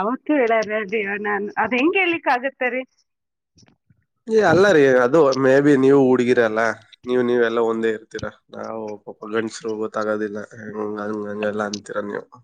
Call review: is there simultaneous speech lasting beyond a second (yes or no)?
no